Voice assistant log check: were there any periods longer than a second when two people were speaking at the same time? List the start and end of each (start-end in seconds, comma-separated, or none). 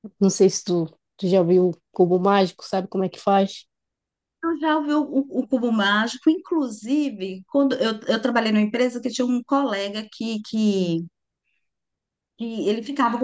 none